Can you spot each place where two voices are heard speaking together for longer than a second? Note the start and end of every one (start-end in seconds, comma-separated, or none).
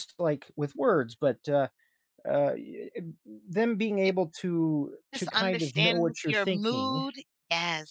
5.1-7.0